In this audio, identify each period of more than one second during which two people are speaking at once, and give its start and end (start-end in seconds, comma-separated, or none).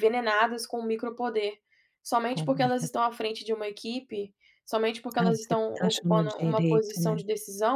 5.2-7.2